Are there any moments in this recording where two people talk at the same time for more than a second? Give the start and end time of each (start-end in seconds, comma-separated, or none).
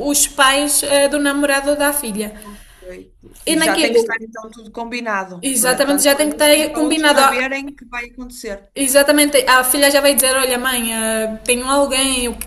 5.4-7.2